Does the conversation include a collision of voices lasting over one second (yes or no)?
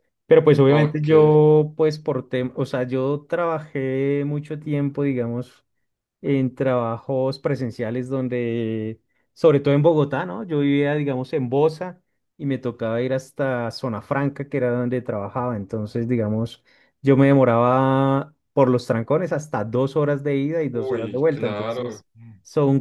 yes